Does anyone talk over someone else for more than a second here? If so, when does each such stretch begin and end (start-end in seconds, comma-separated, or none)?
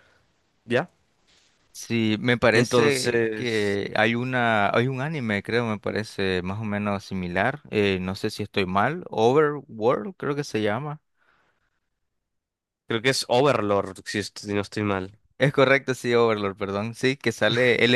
2.5-3.8